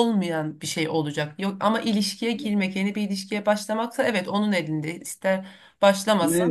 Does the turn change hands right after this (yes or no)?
yes